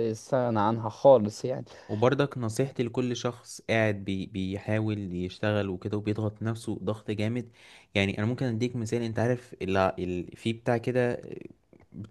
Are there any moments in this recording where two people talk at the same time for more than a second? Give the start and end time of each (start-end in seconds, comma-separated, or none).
none